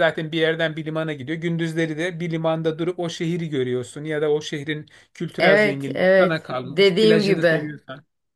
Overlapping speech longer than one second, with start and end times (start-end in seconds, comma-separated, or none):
5.4-7.6